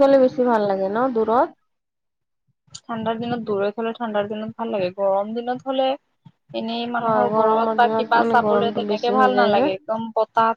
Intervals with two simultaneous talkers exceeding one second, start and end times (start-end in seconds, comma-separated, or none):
7.0-9.7